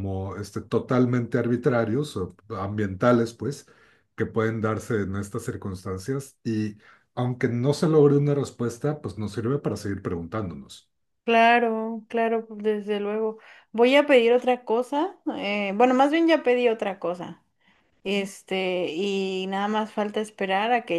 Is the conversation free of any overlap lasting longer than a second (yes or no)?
yes